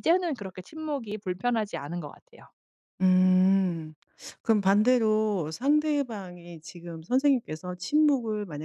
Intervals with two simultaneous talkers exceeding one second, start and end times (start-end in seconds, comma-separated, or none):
none